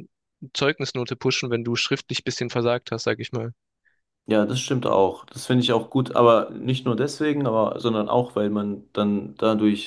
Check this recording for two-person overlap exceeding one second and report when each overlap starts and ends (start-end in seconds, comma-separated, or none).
none